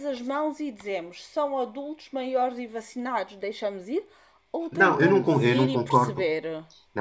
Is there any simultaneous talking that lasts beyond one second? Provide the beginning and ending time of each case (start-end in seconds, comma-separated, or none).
4.7-6.3